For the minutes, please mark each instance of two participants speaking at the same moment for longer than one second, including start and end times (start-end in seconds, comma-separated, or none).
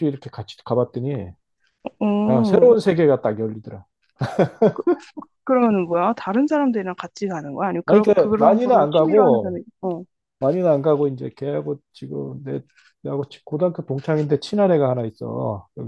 7.8-9.5